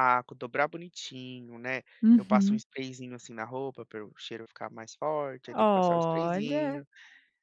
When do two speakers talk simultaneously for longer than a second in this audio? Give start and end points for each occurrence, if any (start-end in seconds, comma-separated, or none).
5.5-6.8